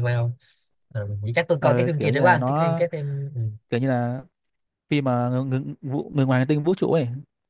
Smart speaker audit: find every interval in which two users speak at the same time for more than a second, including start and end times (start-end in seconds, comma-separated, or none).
1.6-2.8